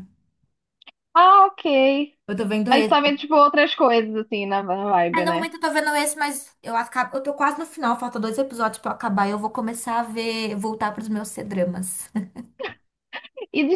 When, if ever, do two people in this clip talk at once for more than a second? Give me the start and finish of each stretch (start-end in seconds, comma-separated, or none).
none